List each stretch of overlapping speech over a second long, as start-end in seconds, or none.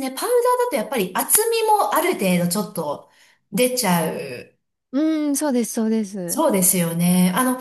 none